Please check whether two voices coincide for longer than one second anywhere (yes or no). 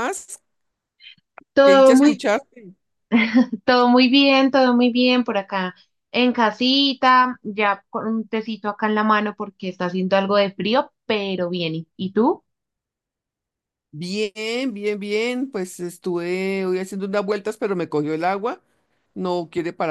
no